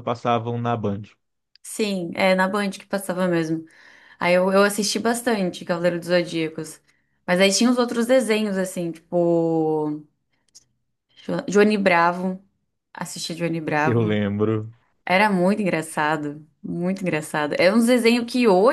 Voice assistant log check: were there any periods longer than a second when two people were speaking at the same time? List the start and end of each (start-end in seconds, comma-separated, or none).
none